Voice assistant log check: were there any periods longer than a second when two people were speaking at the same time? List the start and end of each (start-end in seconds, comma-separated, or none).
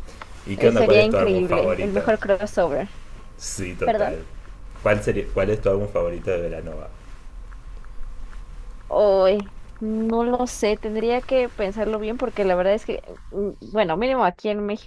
0.6-2.1